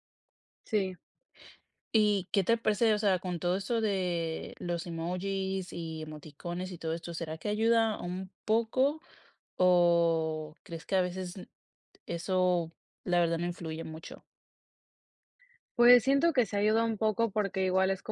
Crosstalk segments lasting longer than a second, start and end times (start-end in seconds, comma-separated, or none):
none